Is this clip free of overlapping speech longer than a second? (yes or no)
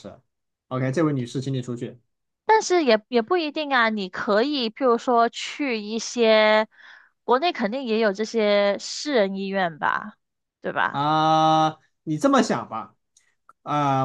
yes